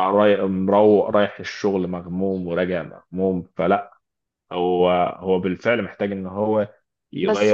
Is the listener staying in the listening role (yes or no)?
yes